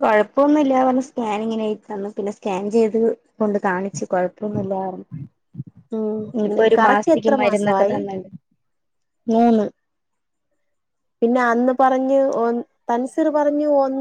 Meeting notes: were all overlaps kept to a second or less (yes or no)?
no